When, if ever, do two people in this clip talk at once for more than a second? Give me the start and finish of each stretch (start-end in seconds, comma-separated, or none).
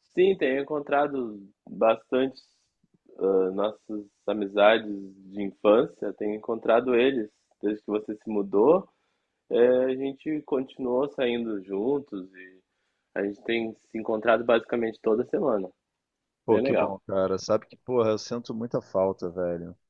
none